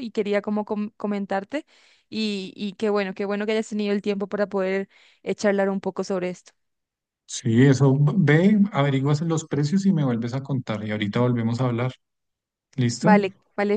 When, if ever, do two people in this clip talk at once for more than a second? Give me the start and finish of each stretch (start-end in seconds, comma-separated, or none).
none